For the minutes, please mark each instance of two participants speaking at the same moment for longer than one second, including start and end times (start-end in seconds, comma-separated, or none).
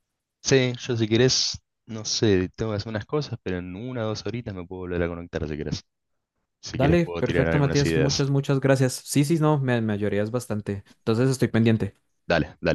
6.7-8.2